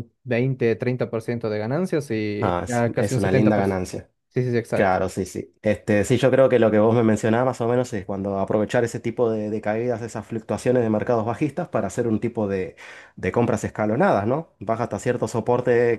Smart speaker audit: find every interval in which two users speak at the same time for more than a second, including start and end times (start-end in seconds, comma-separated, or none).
2.4-3.8